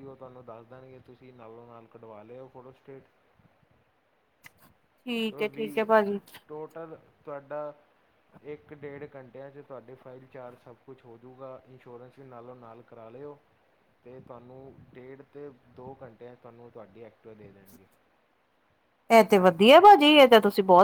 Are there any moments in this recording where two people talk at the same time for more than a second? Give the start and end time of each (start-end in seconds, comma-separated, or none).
none